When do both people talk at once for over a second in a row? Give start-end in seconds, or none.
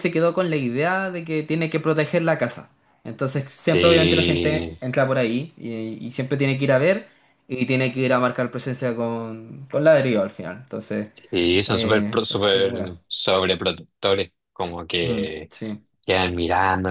3.5-4.8, 11.7-13.0